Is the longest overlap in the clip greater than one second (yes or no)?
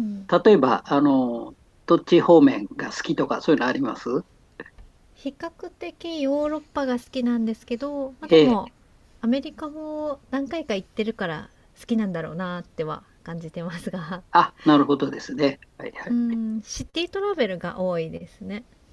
no